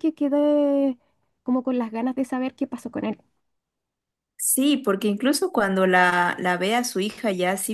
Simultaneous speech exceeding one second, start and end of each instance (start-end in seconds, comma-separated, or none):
none